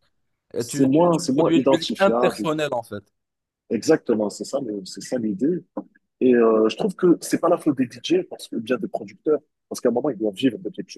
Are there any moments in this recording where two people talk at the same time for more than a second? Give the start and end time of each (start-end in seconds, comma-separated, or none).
0.6-2.5